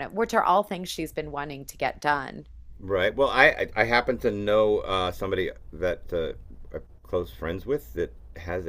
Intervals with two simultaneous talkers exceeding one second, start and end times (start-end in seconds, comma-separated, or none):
none